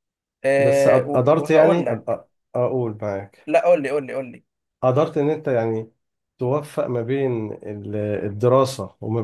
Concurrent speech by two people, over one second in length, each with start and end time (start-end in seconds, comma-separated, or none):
0.6-2.2